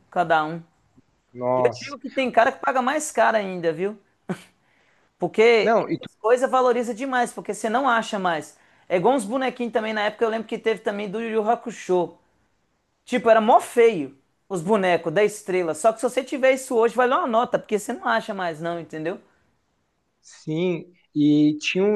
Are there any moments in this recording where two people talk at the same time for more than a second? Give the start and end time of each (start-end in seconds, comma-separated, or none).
none